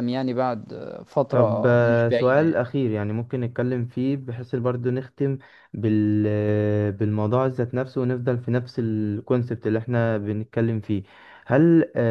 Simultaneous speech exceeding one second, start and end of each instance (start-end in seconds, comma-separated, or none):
1.3-2.6